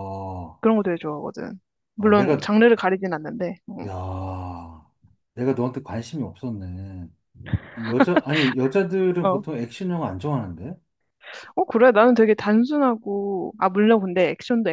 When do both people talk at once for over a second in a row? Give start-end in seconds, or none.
none